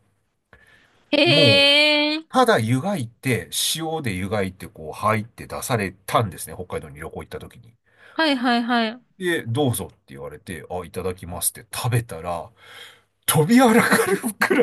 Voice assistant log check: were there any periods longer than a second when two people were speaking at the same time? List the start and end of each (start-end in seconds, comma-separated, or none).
none